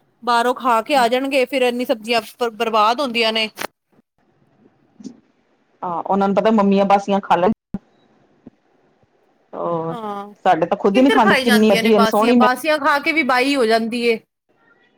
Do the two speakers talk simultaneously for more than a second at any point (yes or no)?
yes